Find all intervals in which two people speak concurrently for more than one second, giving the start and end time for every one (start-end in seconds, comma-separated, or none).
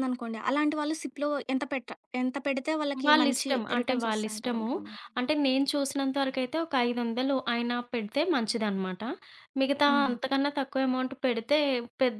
3.0-4.7